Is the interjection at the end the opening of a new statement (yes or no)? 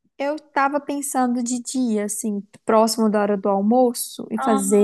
no